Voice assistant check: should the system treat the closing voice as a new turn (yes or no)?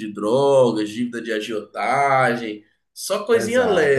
yes